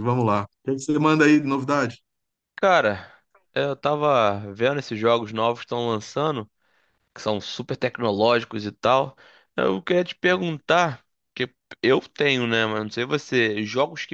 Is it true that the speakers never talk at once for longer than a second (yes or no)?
yes